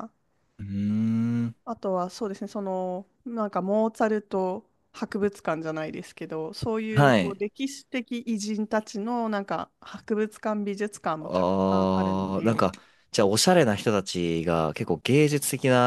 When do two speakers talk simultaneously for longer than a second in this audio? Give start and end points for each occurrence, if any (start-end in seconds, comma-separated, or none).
11.2-12.7